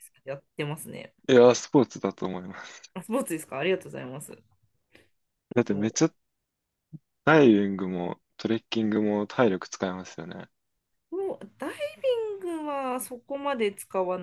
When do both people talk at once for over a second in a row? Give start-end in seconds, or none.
none